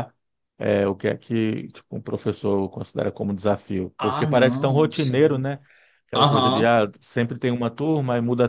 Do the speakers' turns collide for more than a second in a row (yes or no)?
yes